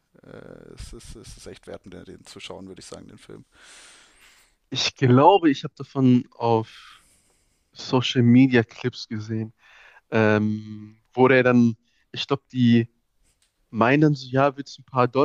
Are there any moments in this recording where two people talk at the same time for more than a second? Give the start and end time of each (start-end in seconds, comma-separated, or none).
none